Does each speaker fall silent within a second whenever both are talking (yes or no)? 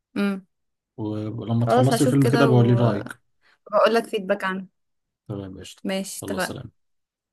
no